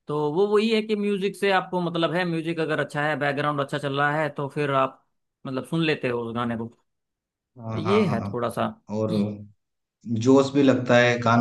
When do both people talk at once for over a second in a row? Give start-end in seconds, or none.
none